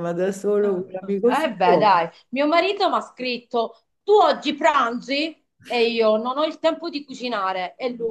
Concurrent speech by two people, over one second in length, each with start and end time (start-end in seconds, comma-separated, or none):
0.6-2.0